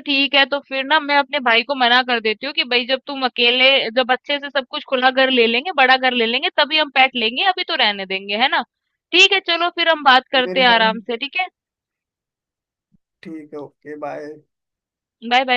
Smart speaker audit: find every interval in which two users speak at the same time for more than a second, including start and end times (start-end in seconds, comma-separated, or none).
none